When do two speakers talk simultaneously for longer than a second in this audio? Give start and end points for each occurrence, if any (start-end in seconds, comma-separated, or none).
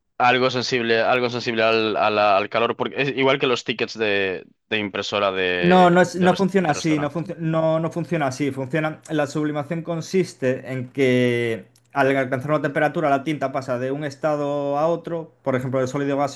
5.6-7.2